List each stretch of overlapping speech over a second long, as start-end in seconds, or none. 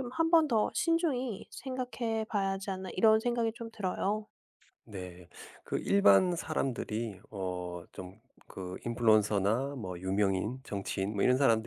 none